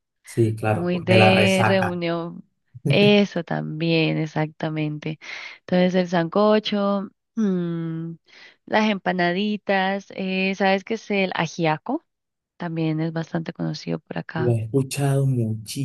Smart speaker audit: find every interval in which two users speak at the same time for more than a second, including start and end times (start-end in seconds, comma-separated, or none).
0.7-2.0